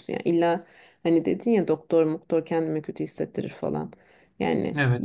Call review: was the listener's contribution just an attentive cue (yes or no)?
yes